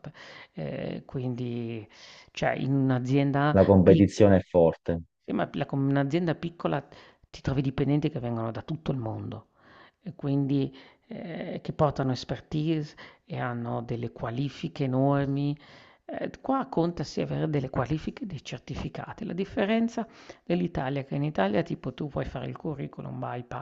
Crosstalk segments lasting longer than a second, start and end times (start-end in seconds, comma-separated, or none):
none